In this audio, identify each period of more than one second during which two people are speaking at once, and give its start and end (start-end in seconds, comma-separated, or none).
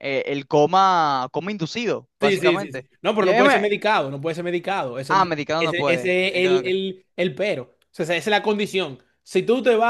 2.2-3.6, 5.1-6.8